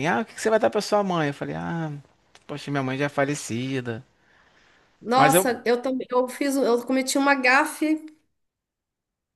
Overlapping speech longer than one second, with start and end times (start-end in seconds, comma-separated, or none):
none